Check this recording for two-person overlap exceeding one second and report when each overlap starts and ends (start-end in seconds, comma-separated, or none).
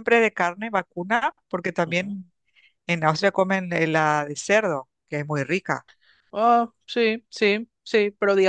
none